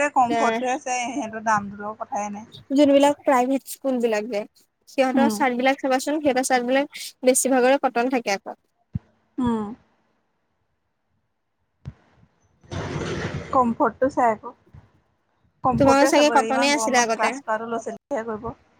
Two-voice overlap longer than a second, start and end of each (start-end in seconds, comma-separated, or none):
15.8-17.3